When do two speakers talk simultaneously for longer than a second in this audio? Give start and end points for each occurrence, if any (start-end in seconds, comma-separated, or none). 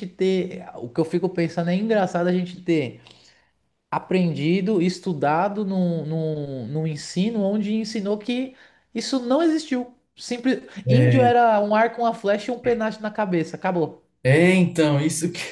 none